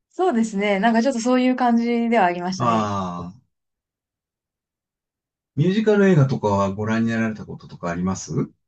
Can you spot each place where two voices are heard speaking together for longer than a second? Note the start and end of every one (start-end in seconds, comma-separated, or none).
none